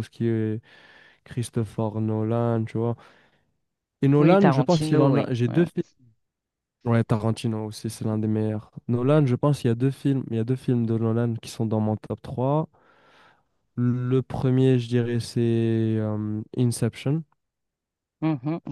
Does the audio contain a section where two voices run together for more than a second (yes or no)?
yes